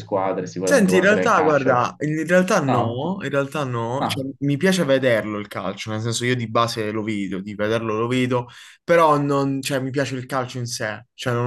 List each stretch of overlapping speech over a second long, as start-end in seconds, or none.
0.6-1.9